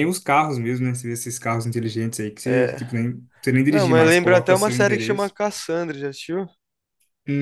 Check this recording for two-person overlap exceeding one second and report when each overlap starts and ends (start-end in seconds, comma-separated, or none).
3.7-5.3